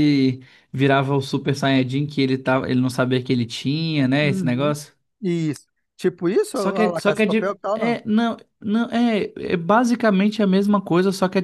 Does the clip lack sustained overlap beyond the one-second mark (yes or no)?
no